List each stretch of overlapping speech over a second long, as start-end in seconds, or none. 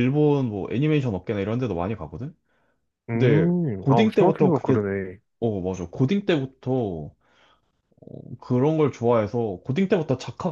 3.1-4.8